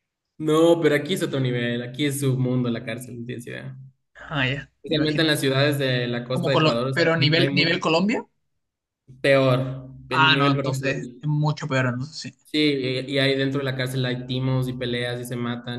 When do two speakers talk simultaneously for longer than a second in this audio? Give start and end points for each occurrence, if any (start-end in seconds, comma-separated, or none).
6.3-7.8, 10.1-11.3